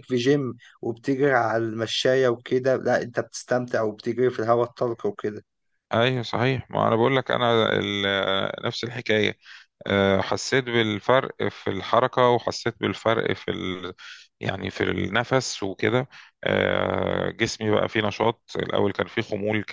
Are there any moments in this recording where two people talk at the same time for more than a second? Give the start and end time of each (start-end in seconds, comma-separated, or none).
none